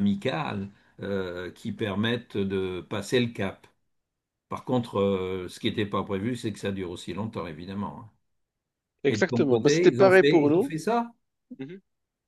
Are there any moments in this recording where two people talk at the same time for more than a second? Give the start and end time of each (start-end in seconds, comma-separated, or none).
9.1-10.7